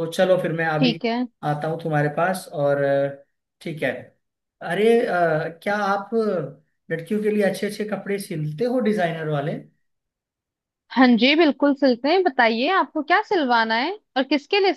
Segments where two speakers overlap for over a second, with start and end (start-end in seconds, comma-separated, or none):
none